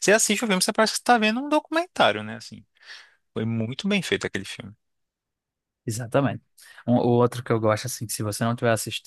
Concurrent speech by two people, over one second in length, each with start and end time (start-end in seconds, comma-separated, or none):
none